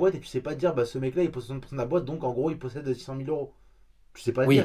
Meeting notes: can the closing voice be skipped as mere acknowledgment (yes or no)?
no